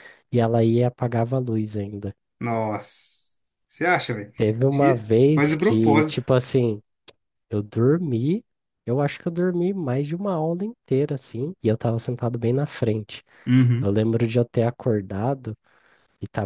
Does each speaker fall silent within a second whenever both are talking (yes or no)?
no